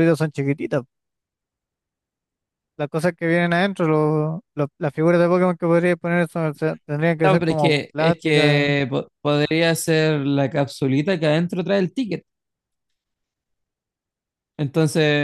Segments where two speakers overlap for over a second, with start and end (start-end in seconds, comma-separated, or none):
7.2-8.8